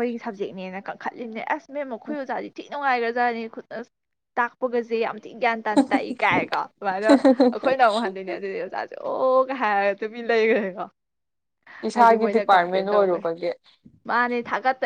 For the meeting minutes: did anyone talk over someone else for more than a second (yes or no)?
yes